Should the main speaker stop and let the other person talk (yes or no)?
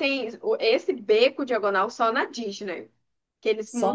yes